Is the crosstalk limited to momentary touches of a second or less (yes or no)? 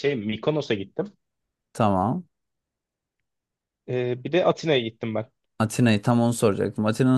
yes